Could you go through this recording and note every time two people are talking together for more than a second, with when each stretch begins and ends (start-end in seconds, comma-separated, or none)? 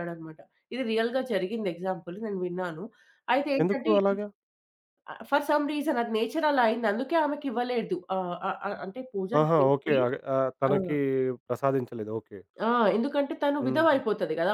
none